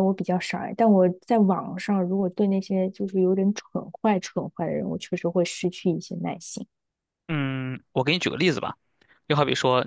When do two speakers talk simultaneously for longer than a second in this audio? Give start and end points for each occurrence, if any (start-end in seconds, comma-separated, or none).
none